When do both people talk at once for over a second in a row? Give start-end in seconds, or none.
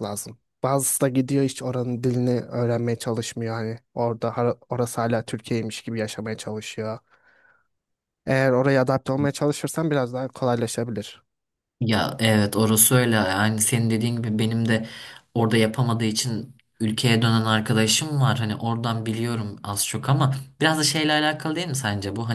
none